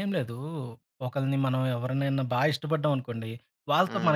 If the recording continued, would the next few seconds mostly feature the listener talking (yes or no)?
no